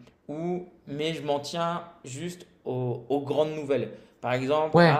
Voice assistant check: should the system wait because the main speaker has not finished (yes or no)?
yes